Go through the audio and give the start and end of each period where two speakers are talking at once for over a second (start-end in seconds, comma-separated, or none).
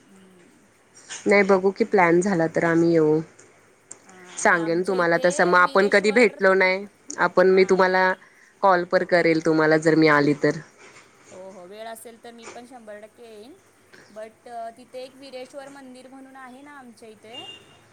4.4-6.7